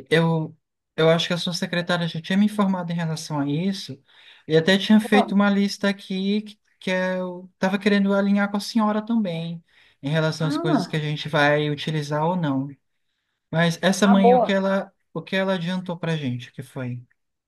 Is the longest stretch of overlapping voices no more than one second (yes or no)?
yes